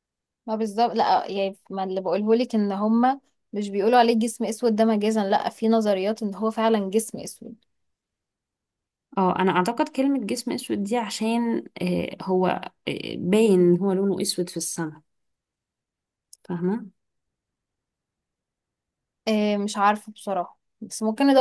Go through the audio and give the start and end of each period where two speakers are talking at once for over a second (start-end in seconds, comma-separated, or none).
none